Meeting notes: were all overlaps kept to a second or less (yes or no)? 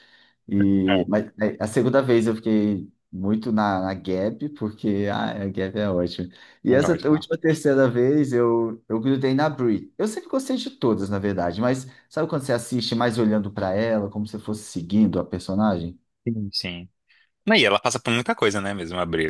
yes